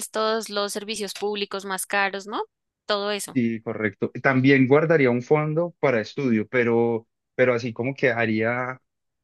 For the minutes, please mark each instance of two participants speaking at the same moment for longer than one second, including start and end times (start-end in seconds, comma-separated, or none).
none